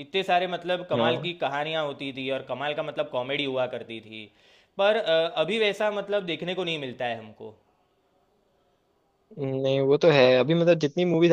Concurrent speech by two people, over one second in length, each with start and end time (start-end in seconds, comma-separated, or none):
none